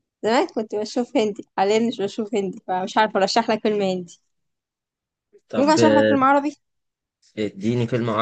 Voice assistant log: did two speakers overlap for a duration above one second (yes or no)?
no